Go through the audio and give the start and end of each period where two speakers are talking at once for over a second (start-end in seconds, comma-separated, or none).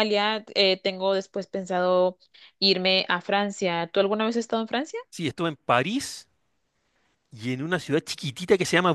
none